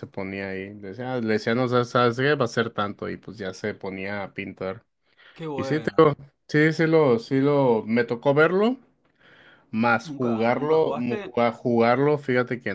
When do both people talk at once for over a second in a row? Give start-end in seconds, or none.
10.0-11.3